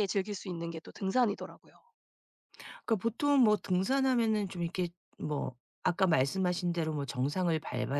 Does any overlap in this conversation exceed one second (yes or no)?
no